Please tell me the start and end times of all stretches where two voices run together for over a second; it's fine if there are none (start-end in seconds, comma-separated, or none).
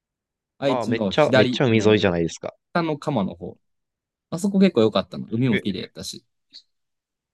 0.7-2.0